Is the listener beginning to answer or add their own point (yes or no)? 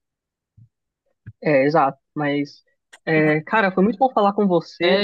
yes